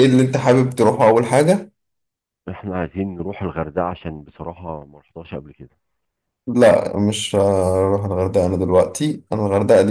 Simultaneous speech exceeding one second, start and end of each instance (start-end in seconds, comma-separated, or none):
none